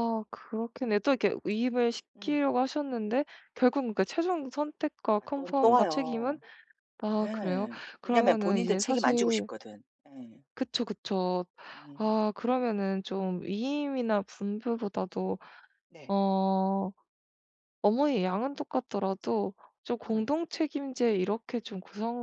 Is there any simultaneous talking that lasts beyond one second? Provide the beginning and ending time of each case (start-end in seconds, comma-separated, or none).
5.2-6.4, 7.1-9.5